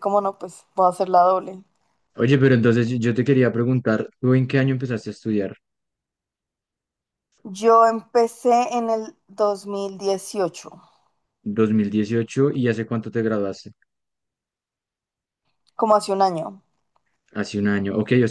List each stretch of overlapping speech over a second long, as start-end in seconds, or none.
none